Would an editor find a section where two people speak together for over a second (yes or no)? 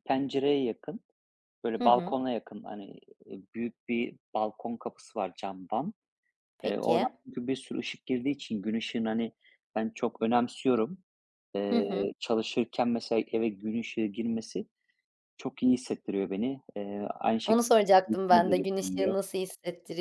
yes